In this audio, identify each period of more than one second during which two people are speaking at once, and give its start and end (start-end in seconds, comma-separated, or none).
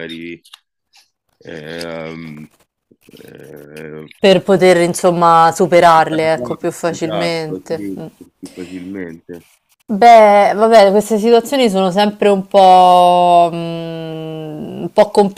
6.1-8.1